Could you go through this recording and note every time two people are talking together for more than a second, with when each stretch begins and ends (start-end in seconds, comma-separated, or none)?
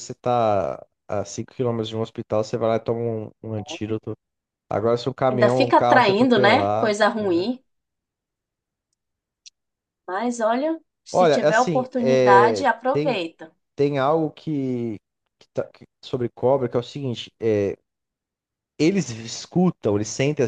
5.3-7.0, 11.1-13.2